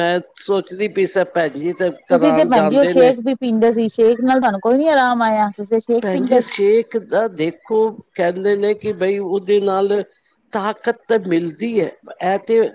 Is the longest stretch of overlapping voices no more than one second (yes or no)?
yes